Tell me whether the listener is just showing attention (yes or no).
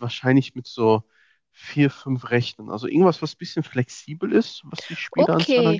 no